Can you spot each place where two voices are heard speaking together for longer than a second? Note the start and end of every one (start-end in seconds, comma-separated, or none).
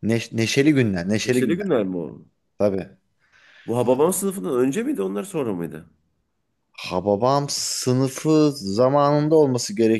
none